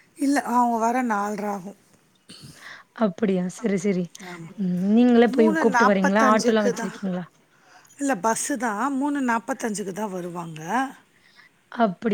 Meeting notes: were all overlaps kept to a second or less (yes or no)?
no